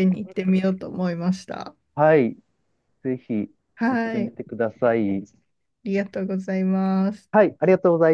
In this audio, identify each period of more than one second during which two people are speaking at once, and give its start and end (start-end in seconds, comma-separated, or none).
none